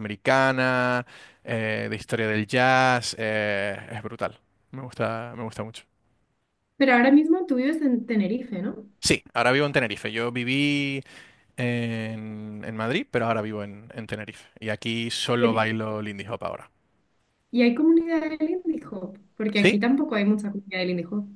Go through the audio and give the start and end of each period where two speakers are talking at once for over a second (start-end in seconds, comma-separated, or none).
none